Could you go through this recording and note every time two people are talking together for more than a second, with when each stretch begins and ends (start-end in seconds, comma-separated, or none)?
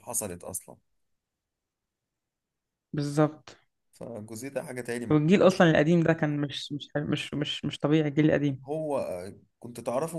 none